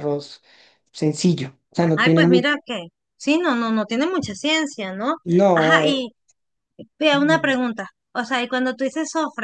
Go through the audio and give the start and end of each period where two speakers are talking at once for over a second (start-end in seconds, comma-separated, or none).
none